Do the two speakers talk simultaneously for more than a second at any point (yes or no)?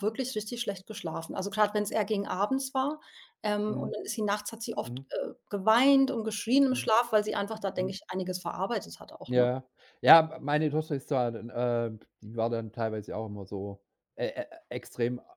no